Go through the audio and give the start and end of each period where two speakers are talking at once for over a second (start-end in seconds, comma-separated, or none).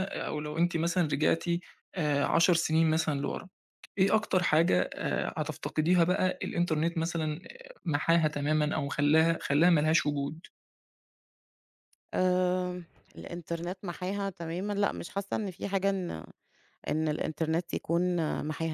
none